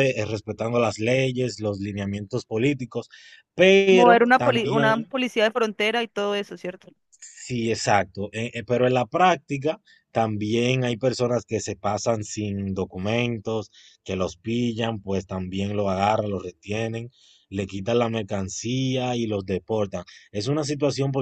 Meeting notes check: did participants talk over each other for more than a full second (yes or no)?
yes